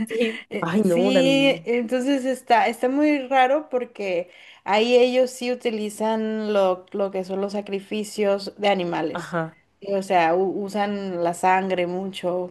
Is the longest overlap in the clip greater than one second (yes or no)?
yes